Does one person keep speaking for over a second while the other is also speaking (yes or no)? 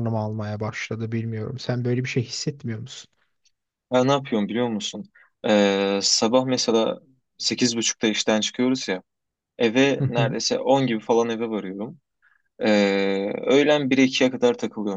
no